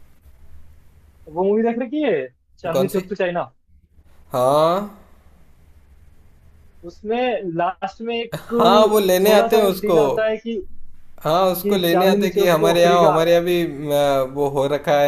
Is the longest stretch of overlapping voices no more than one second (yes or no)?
no